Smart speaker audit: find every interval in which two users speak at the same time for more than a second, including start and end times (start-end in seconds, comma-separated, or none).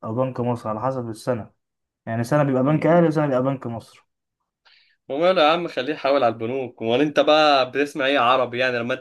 none